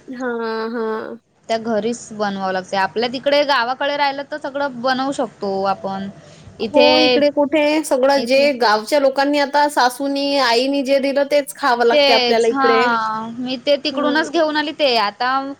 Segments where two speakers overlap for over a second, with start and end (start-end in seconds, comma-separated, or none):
none